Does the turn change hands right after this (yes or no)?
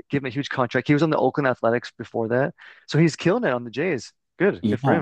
yes